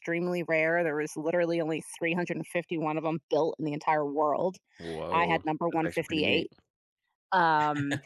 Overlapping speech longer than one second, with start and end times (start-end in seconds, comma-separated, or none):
5.1-6.5